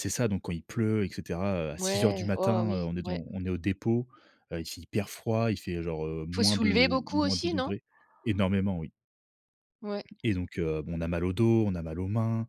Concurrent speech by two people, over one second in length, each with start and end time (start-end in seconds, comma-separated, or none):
1.8-3.2, 6.3-7.7